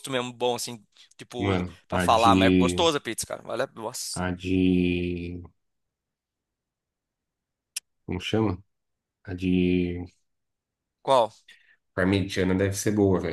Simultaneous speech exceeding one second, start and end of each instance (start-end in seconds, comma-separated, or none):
1.4-2.8